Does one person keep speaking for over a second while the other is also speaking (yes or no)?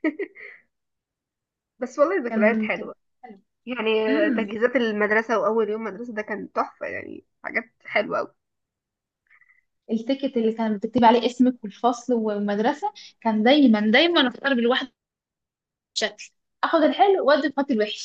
no